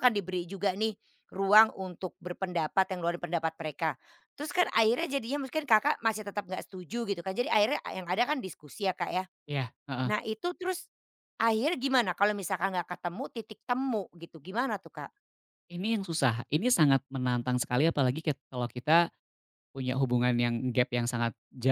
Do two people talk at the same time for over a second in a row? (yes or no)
no